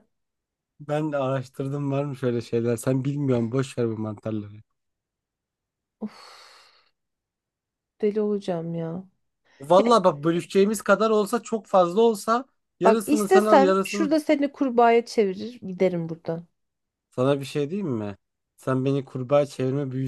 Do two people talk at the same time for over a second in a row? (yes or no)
yes